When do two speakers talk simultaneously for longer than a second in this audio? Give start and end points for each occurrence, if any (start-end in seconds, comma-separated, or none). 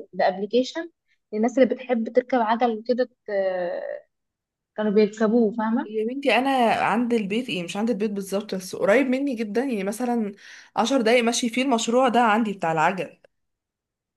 none